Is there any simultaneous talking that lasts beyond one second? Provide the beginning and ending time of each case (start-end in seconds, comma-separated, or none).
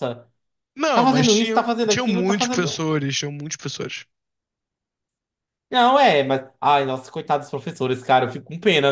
0.9-2.8